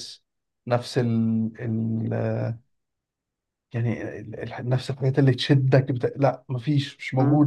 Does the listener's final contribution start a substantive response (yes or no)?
yes